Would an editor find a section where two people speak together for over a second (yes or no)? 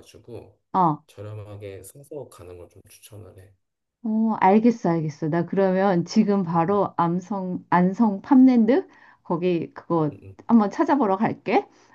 no